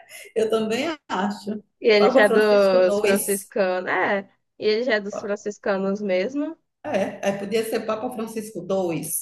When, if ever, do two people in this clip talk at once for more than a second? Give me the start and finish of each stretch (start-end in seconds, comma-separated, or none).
1.8-3.5